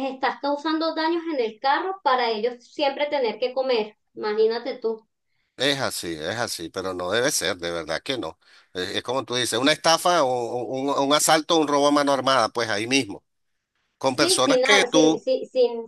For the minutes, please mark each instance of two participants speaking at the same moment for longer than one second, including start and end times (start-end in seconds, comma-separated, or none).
14.0-15.2